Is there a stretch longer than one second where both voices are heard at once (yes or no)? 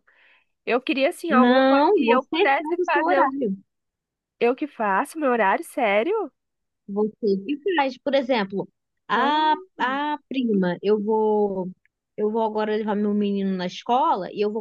yes